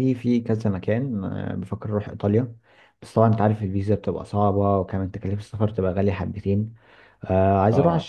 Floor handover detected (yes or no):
no